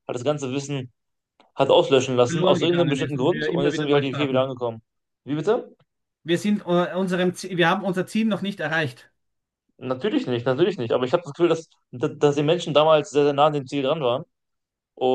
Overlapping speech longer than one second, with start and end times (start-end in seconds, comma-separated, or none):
2.2-4.5